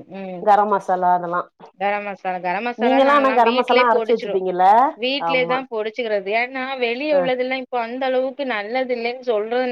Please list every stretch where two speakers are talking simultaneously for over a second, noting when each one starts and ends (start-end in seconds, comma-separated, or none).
2.8-4.4